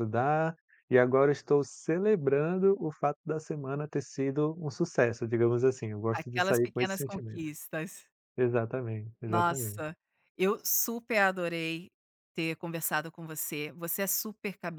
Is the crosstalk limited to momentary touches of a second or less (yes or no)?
no